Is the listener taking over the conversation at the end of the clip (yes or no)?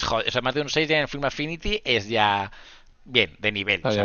no